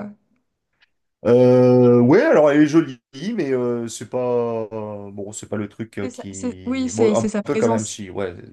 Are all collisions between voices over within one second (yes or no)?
no